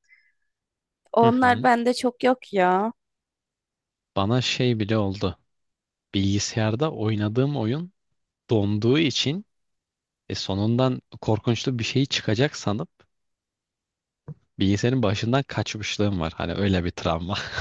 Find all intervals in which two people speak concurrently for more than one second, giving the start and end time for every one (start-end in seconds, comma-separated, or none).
none